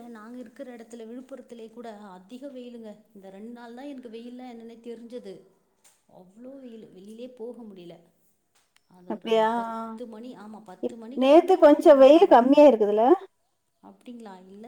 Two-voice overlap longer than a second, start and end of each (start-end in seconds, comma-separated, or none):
10.8-12.6